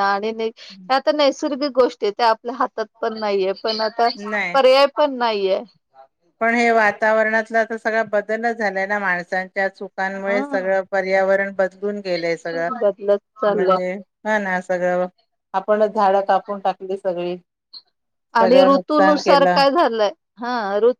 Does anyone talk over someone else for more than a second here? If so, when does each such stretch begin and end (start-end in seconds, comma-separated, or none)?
18.4-19.6